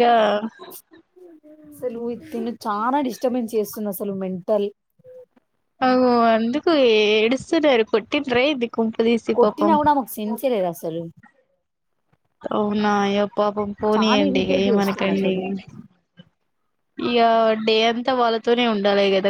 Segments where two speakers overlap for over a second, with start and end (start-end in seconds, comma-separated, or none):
13.9-15.3